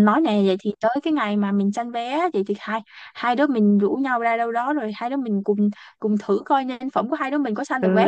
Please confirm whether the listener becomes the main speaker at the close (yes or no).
yes